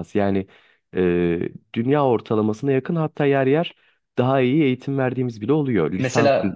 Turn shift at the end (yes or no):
yes